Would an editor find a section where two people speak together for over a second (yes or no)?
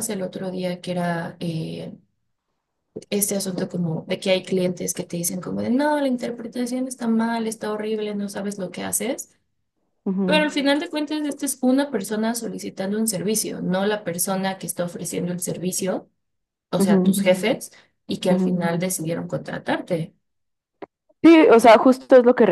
no